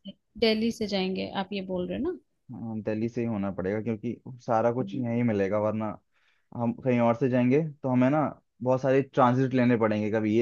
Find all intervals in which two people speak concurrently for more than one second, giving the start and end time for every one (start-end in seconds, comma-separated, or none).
none